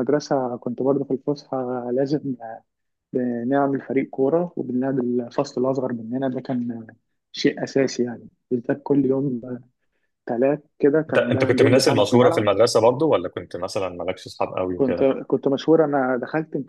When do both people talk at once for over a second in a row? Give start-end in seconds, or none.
11.1-12.5